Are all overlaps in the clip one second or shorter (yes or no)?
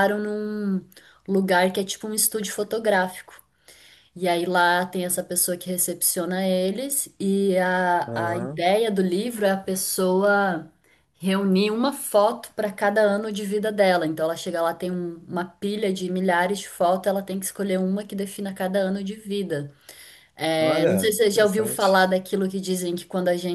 no